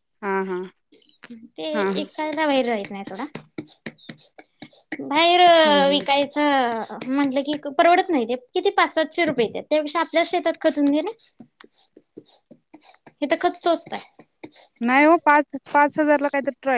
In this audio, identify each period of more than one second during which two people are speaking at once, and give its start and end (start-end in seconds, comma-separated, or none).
none